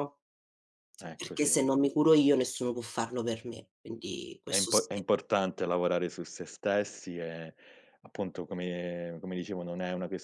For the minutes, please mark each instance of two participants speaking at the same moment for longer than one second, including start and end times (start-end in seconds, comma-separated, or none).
none